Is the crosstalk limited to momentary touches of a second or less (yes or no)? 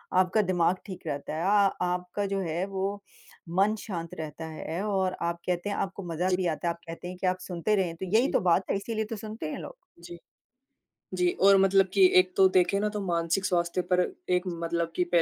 yes